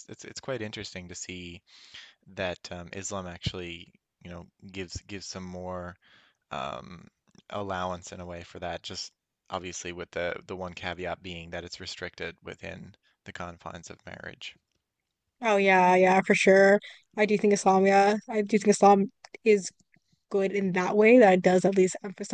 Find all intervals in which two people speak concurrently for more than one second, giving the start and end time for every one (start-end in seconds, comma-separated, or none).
none